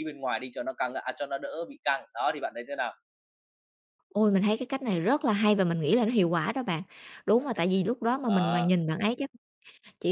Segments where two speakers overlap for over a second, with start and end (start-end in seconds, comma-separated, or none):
none